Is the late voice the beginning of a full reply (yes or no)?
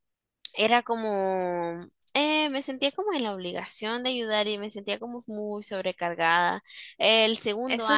yes